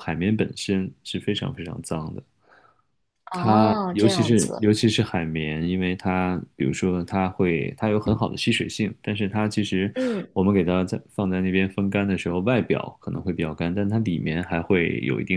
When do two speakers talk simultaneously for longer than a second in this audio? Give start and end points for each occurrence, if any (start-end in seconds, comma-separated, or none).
3.3-4.7